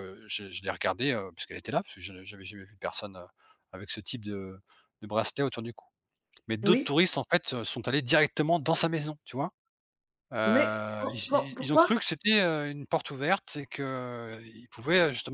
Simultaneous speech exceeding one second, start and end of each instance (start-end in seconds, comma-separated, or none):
10.4-11.9